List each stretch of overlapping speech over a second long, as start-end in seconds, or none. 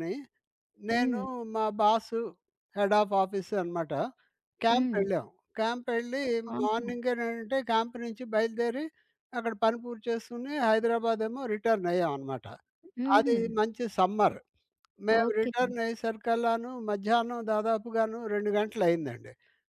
none